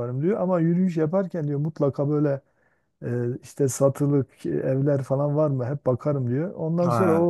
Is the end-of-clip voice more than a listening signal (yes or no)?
no